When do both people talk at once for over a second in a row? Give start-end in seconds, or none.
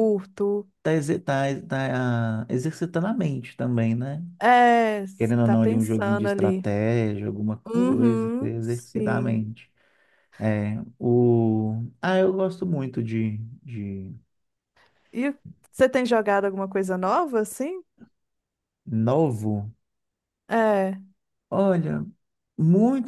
5.2-6.7, 7.7-9.4